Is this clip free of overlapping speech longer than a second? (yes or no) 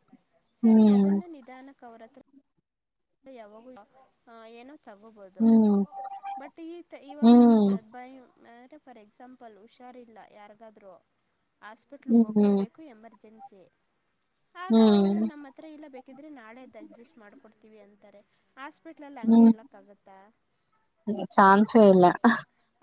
yes